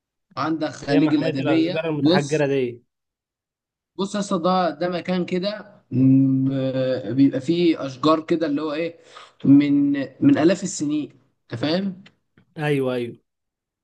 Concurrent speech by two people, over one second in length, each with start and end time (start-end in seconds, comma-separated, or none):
0.9-2.5